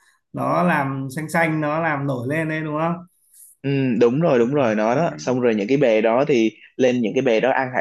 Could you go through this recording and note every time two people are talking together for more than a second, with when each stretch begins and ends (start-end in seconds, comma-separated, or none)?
none